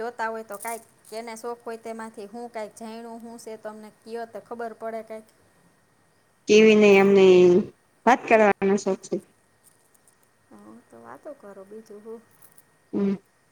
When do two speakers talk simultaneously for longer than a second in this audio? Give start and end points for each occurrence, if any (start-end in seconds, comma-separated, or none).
none